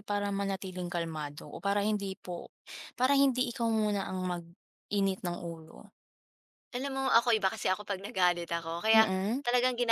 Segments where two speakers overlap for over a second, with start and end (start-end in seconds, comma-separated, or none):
none